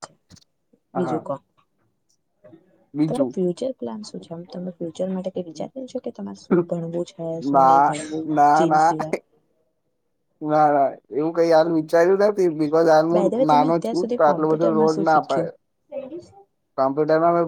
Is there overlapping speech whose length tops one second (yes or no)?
yes